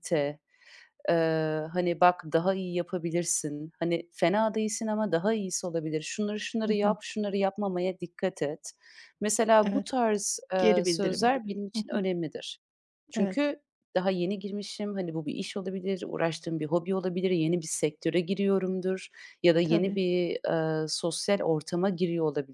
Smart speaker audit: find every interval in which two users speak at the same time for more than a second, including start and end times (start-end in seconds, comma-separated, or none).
10.6-12.0